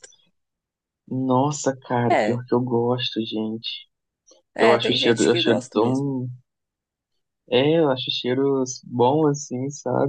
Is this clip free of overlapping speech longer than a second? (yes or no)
no